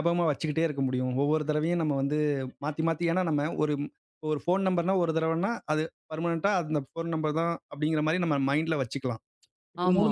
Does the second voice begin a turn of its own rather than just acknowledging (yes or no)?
no